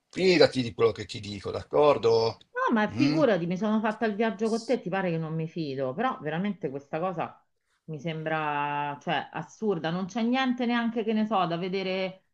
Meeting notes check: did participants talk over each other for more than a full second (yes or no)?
no